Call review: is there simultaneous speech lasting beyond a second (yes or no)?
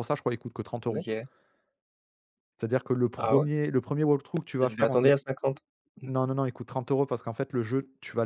no